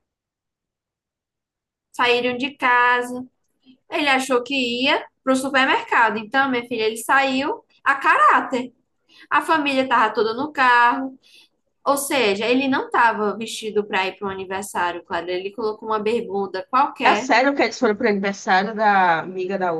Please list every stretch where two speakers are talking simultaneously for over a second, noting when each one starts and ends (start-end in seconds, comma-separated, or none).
none